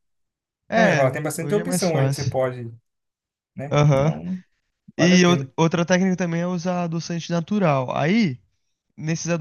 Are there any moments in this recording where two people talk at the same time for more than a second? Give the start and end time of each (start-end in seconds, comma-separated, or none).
0.7-2.4